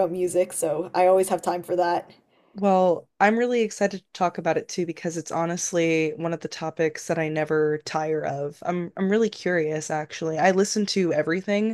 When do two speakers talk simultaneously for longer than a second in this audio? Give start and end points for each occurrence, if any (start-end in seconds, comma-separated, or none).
none